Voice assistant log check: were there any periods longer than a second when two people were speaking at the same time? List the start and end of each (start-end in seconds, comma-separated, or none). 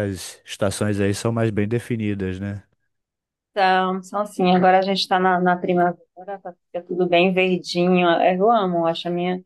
none